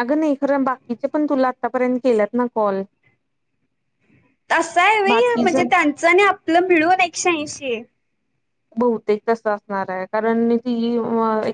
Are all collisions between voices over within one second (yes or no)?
yes